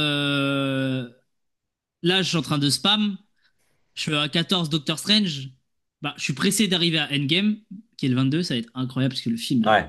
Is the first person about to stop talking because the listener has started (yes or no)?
yes